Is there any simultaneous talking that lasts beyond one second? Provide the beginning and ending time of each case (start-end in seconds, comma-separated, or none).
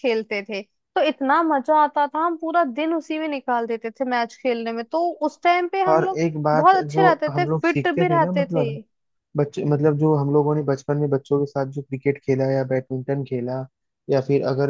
5.9-8.7